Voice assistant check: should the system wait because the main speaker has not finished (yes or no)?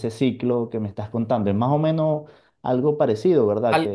no